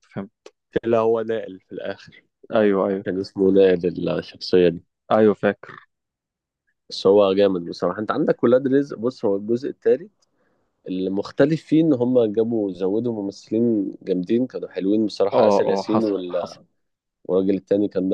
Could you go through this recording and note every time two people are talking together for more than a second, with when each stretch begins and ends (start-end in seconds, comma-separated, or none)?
15.3-16.6